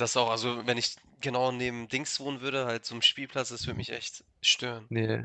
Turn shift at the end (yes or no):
yes